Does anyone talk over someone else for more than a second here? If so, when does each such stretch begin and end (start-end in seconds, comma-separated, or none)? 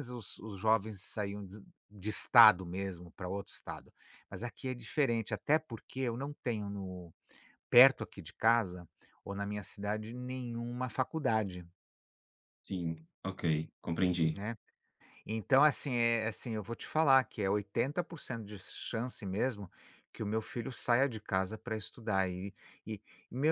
none